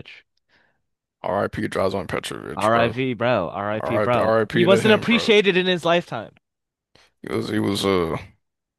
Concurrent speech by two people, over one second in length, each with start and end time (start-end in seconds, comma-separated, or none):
3.7-5.3